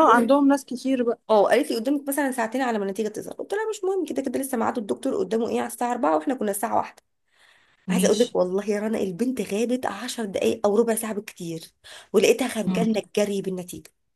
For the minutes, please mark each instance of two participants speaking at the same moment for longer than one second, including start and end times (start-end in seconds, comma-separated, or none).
none